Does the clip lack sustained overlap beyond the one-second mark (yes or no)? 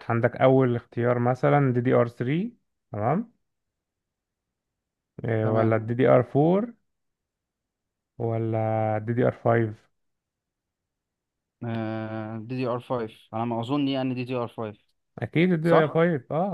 yes